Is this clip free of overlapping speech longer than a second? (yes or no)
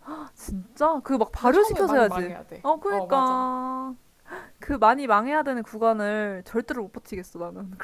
no